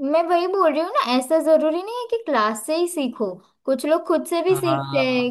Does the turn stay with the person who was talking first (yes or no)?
yes